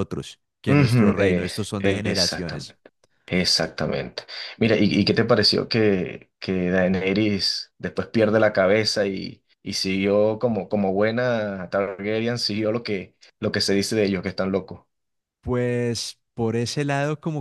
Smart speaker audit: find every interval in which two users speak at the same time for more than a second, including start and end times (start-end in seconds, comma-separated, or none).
0.7-2.8